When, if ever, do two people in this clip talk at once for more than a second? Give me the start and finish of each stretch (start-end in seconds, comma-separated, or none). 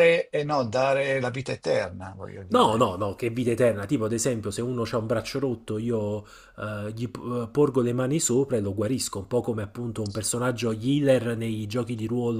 none